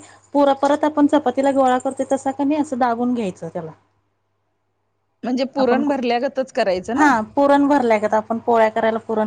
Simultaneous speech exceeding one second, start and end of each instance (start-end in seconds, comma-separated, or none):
none